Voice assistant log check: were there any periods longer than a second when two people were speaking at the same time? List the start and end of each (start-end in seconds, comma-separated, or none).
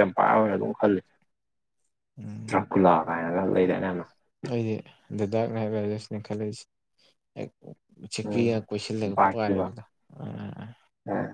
8.2-9.7